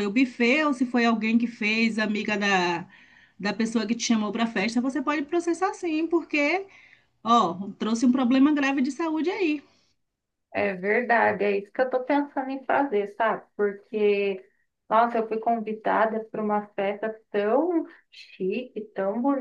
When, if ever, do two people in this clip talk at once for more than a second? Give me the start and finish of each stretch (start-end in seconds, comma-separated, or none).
none